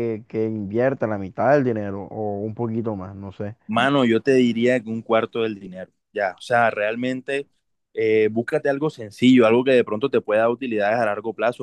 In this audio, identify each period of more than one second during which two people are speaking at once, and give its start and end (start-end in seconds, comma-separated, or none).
none